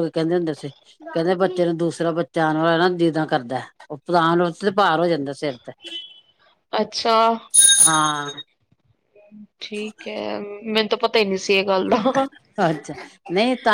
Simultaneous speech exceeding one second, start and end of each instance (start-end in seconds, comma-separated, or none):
none